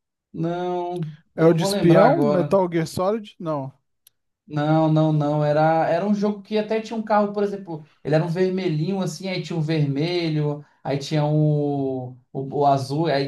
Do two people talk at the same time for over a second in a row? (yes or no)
yes